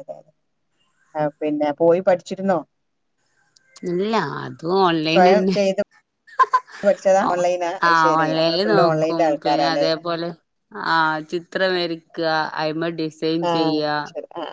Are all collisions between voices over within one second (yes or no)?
no